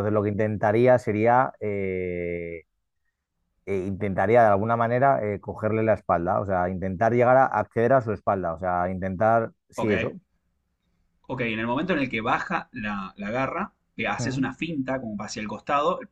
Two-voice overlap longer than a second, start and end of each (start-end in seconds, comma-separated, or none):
none